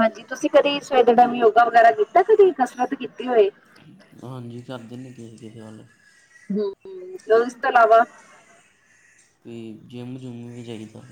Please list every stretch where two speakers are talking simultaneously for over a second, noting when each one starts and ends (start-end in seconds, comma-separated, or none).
none